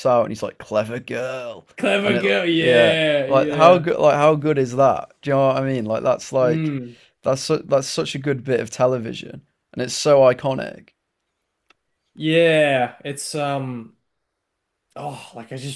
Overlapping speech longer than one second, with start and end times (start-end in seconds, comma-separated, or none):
2.0-3.8